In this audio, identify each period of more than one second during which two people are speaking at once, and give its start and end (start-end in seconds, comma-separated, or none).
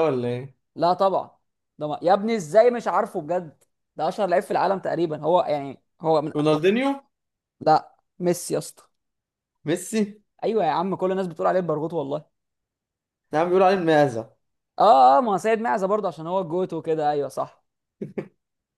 none